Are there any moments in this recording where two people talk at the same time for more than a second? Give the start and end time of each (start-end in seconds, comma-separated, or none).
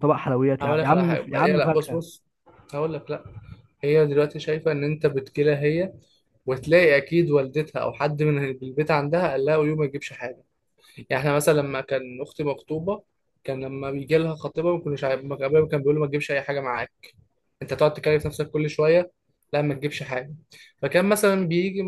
0.6-2.0